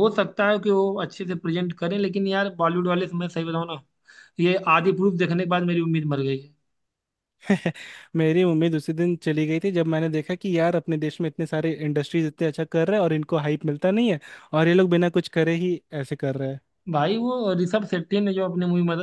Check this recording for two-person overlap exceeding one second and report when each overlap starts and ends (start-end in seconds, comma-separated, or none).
none